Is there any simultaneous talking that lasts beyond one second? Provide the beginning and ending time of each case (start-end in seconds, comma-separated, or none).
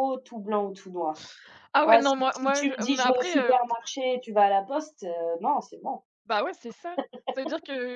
1.8-3.5